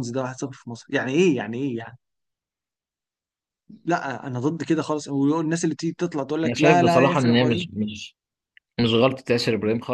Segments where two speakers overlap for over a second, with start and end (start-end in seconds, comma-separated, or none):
6.5-7.7